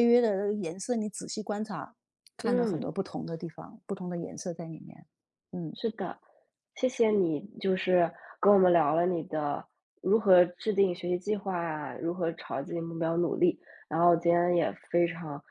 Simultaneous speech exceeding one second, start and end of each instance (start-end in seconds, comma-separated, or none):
none